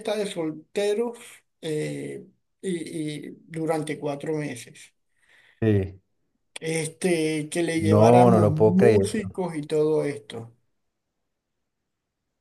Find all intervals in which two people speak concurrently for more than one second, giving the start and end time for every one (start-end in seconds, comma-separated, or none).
7.8-9.1